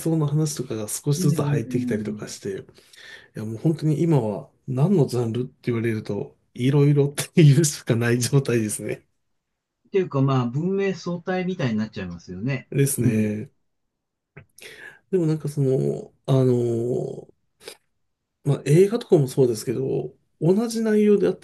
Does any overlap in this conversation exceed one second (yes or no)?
yes